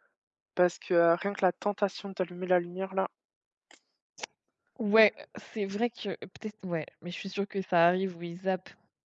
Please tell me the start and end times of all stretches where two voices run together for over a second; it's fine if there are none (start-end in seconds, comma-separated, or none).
none